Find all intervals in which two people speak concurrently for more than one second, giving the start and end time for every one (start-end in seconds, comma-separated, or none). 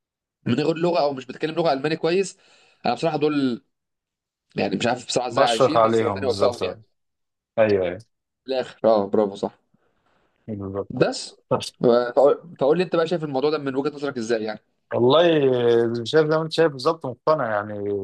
5.3-6.6